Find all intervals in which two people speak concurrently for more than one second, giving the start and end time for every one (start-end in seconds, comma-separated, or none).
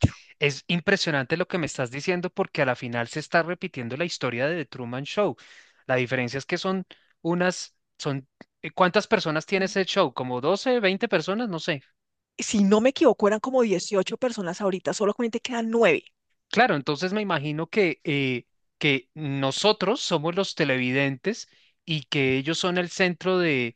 none